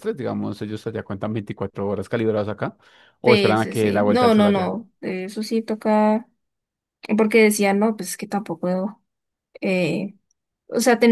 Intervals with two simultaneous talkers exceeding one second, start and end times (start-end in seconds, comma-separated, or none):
3.2-4.8